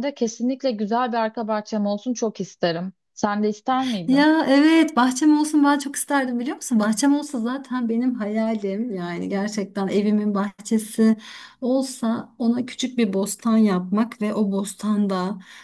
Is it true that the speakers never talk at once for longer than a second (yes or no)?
yes